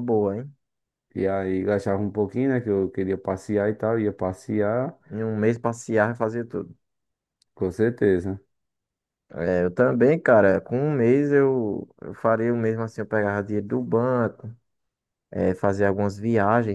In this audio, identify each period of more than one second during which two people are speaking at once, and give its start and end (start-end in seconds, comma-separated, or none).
none